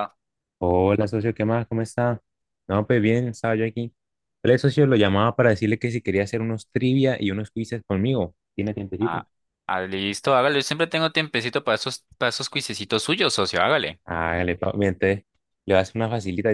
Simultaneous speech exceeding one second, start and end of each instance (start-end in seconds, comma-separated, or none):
none